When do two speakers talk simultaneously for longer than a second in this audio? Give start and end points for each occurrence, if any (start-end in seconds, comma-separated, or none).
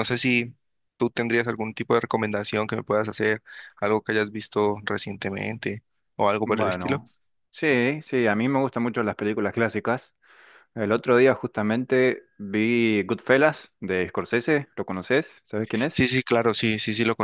none